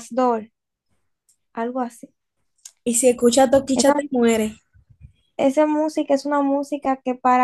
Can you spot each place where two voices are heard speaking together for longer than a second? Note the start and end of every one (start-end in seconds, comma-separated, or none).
none